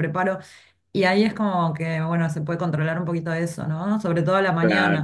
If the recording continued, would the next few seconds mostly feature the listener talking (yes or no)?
yes